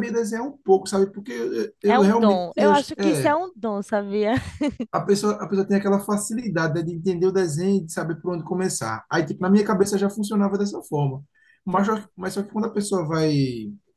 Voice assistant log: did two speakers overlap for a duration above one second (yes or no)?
yes